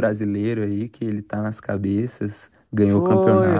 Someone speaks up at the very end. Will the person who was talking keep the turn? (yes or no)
no